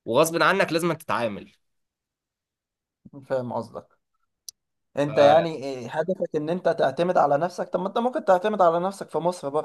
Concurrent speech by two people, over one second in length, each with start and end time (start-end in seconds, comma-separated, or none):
none